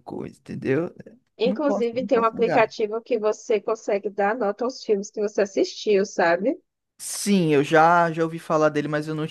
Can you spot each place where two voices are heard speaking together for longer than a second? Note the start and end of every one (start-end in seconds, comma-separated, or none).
1.4-2.7